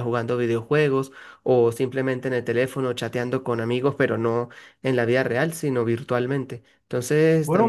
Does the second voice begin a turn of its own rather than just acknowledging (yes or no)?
yes